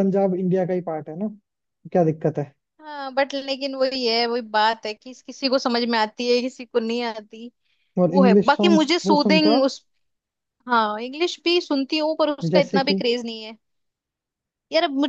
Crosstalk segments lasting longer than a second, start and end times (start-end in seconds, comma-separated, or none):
8.1-9.7